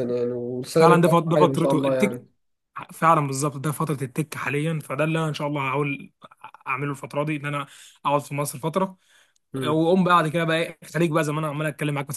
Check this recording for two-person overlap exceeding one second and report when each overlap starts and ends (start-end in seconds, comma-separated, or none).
0.8-2.2